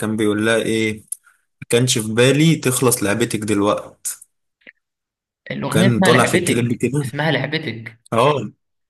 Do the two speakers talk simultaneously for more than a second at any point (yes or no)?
yes